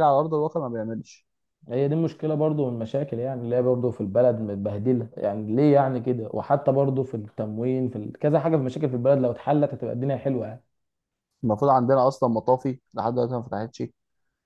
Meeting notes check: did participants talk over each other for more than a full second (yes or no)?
no